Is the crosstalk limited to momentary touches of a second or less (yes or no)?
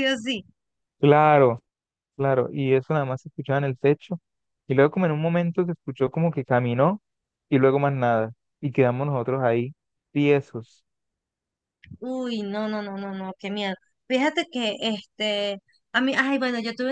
yes